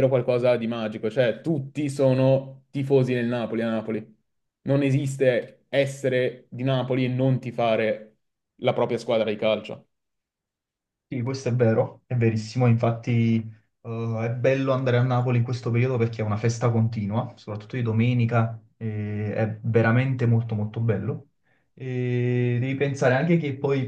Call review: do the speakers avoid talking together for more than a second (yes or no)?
yes